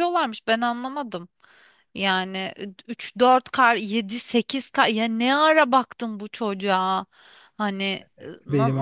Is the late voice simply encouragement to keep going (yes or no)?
no